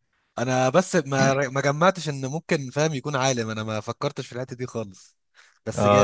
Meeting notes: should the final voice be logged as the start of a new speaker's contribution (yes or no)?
yes